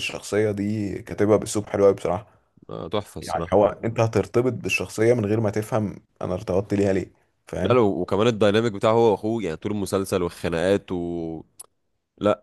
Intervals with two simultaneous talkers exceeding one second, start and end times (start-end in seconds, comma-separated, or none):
none